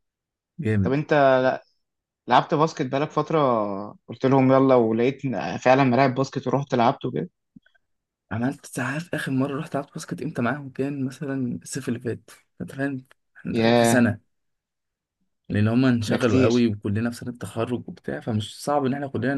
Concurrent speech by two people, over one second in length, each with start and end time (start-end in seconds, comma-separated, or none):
none